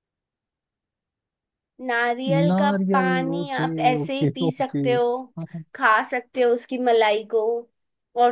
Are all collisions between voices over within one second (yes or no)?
no